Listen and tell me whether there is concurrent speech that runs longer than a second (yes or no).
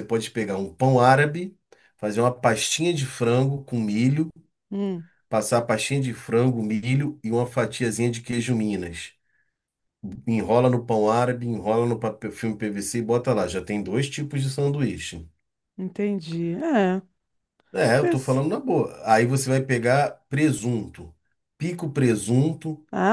no